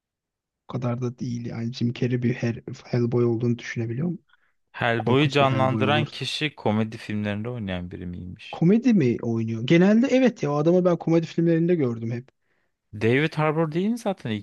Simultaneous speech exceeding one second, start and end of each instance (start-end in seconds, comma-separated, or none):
5.0-6.2